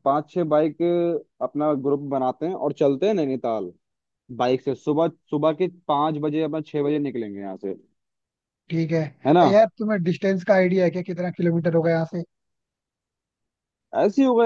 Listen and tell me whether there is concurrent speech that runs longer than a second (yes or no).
no